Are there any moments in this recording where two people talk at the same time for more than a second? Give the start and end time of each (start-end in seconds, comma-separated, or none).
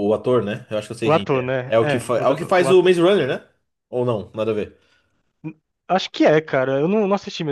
1.0-2.8